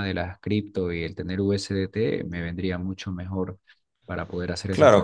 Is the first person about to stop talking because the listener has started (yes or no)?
yes